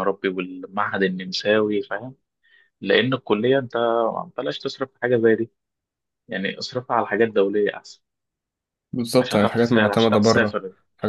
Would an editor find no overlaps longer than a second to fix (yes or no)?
no